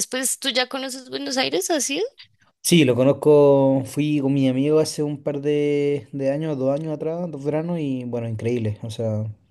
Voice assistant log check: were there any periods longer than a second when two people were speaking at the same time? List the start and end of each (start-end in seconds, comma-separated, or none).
none